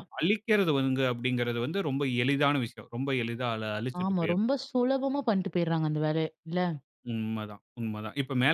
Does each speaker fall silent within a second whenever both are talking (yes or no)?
yes